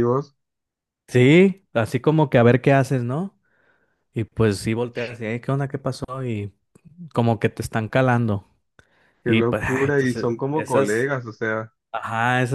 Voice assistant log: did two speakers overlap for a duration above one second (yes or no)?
yes